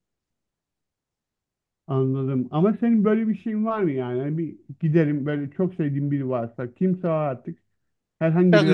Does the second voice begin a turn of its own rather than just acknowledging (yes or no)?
yes